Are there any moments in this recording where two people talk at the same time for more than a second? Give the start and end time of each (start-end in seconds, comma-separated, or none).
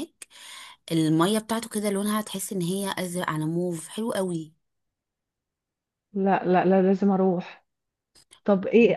none